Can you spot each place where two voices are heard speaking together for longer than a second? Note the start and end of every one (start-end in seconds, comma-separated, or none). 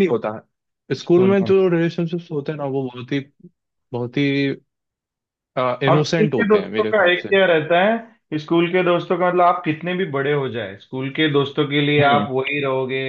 5.9-7.3